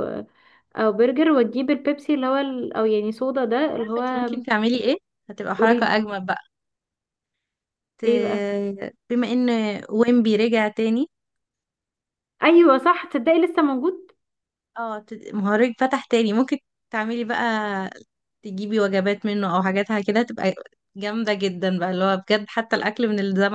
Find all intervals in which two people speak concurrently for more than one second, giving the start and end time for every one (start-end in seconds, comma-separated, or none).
none